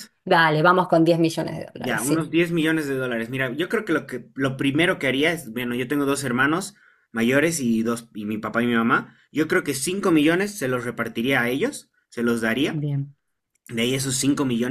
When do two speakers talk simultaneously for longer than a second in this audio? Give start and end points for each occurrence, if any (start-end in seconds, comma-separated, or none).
none